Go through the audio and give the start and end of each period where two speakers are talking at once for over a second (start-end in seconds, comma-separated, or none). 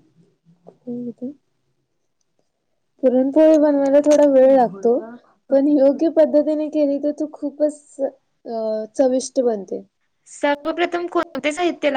none